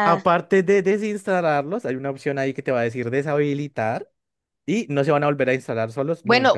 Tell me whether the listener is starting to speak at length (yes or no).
yes